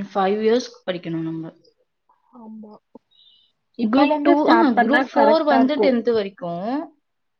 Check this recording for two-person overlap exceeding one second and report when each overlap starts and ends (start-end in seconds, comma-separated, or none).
3.9-5.9